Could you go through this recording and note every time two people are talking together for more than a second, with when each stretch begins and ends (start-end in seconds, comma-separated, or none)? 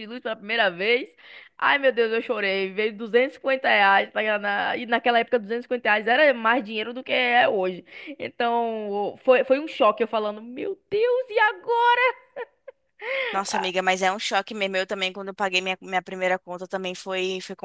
none